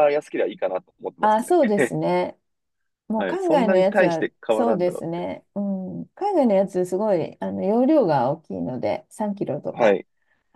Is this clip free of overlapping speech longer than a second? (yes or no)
no